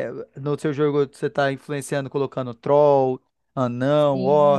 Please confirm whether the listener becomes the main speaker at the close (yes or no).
no